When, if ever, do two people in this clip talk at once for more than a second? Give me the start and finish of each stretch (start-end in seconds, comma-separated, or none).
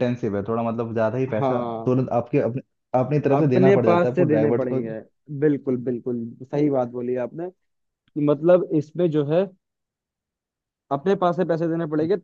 3.4-4.8